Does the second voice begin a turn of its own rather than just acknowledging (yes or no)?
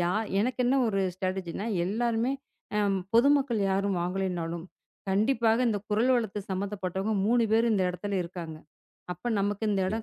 no